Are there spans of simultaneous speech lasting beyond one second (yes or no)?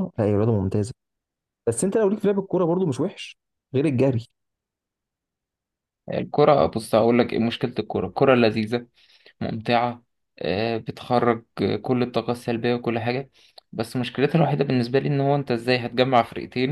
no